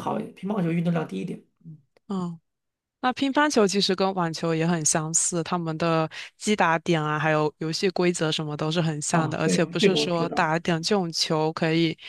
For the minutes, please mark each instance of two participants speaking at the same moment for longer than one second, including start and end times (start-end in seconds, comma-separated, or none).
9.1-10.5